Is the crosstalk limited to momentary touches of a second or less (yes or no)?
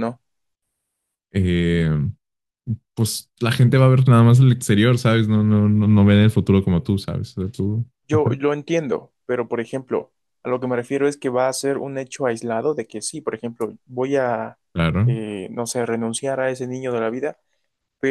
yes